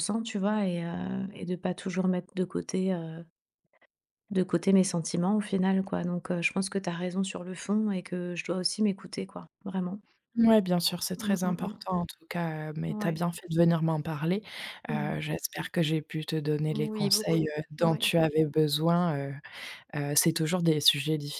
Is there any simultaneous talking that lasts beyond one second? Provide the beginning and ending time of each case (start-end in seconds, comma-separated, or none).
16.7-18.1